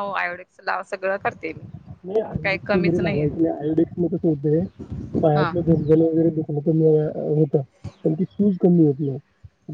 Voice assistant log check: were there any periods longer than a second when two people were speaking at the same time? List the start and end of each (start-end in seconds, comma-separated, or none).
2.2-3.5